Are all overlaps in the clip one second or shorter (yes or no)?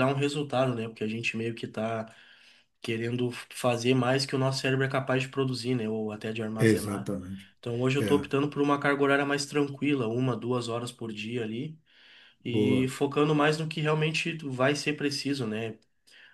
yes